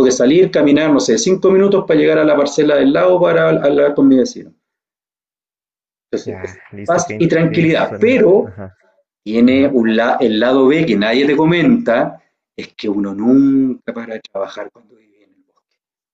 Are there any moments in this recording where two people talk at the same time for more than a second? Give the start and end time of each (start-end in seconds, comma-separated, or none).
6.2-8.5